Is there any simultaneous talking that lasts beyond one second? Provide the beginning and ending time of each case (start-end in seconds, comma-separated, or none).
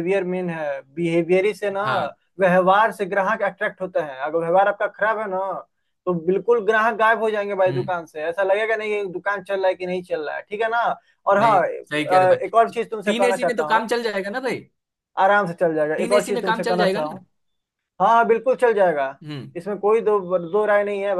11.4-13.9, 16.0-17.2